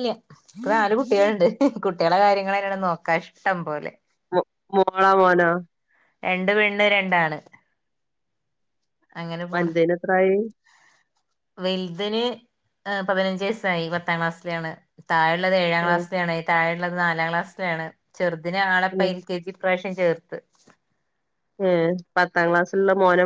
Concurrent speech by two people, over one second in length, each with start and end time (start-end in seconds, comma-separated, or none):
none